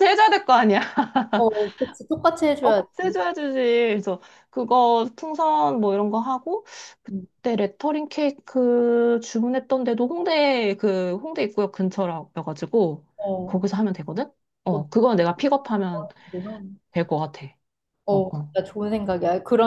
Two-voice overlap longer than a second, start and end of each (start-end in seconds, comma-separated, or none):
none